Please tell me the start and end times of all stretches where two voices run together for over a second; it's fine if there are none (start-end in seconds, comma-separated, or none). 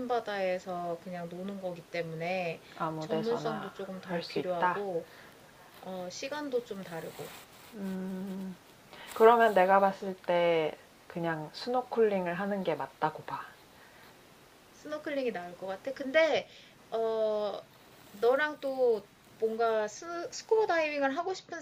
3.0-4.8